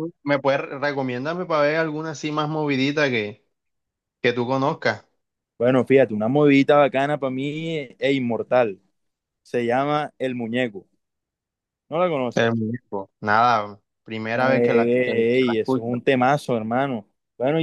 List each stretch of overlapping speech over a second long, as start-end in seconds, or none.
14.3-16.0